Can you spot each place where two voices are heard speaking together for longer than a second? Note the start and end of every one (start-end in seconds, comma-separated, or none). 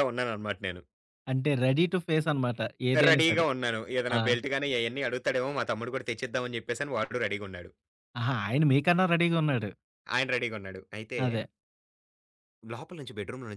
none